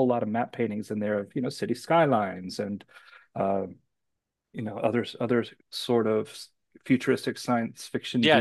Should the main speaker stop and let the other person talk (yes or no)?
yes